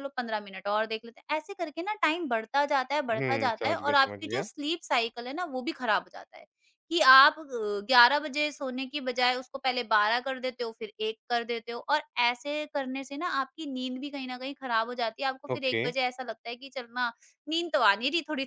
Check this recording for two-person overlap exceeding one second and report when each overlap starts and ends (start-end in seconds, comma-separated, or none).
3.1-4.4